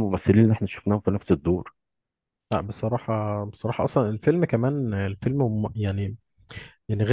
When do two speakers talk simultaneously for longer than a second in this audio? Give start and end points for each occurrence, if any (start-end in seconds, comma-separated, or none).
none